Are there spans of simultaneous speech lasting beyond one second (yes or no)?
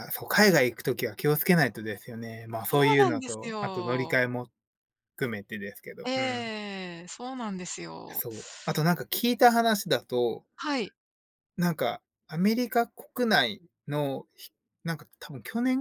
yes